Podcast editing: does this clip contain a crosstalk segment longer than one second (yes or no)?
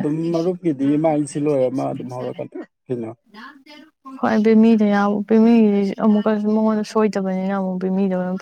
no